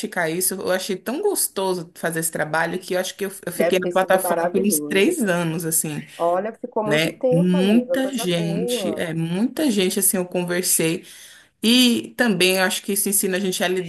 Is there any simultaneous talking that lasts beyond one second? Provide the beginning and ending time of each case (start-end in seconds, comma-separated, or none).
3.5-5.2, 6.8-9.1